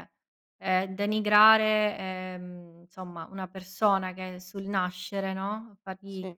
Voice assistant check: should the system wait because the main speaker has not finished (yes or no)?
yes